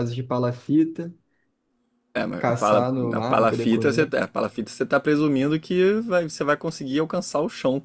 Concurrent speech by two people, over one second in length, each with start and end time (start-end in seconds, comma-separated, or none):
2.4-4.0